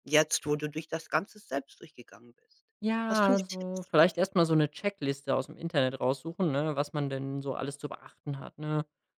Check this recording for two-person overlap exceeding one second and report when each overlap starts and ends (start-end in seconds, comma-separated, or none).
3.1-4.3